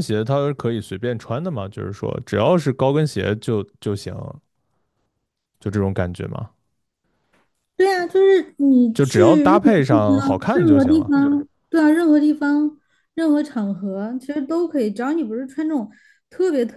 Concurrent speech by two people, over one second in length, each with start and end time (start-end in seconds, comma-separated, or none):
8.9-11.1